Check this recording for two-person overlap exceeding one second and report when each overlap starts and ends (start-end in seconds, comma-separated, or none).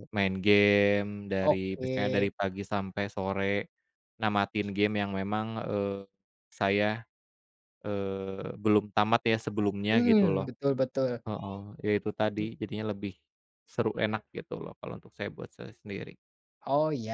none